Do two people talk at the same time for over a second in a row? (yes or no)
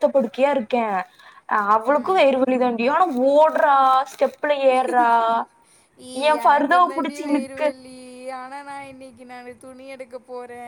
yes